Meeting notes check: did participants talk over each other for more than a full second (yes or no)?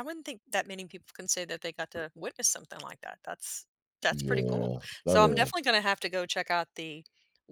yes